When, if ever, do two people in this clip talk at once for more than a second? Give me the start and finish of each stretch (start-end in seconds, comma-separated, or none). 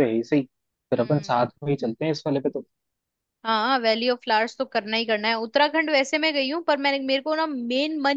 none